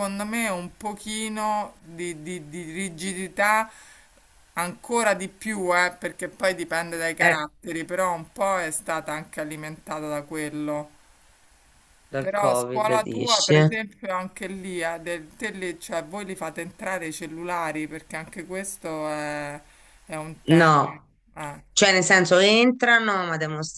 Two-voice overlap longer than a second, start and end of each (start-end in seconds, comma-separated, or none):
12.2-13.6